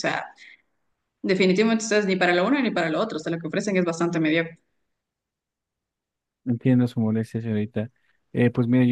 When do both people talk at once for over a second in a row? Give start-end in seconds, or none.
none